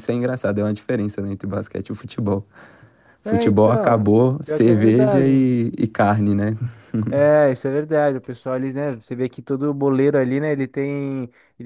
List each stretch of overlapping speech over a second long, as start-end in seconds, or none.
3.2-5.5